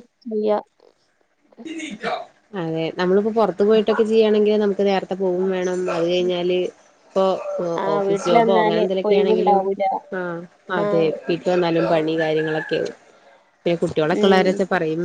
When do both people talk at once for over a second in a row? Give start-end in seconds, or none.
7.8-9.6